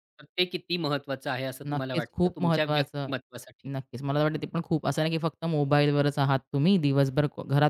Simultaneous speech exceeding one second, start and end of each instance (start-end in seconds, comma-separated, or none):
1.7-3.1